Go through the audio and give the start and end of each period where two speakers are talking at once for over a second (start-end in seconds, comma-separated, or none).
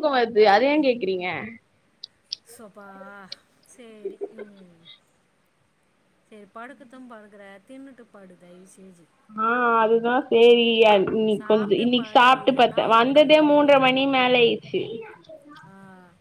11.4-14.4